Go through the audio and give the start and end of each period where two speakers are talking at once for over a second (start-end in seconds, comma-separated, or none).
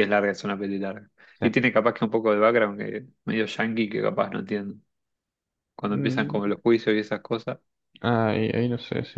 none